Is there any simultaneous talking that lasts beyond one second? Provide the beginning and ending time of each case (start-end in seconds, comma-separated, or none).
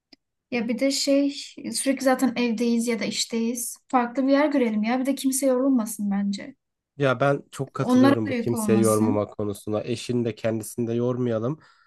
7.8-9.2